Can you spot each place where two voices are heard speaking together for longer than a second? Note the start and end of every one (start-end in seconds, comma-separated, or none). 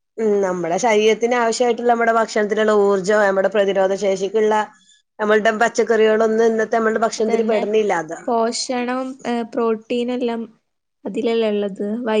none